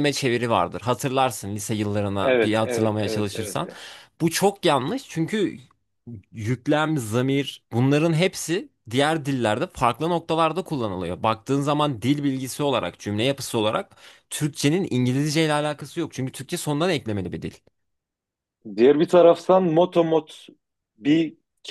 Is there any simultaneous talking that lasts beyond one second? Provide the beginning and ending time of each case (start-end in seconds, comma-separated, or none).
2.2-3.6